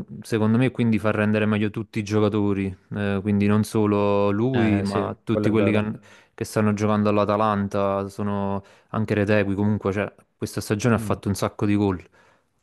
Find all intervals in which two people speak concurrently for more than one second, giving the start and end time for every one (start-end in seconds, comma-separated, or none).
4.5-5.8